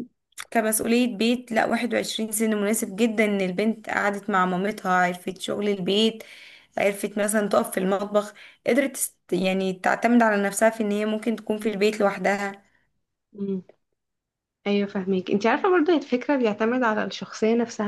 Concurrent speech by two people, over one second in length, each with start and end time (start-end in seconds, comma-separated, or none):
none